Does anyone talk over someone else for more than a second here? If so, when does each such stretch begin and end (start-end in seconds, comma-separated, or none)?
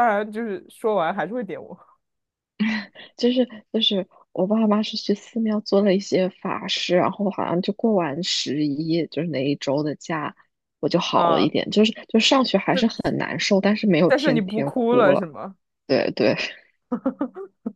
14.1-15.3